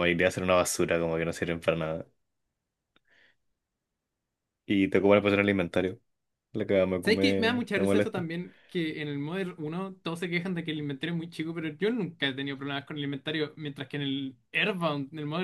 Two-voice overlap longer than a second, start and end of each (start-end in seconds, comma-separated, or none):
7.0-8.3